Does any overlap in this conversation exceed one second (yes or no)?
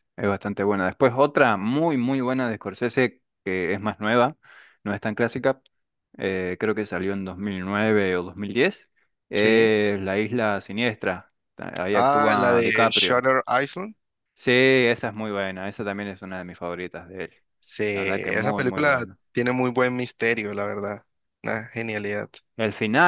yes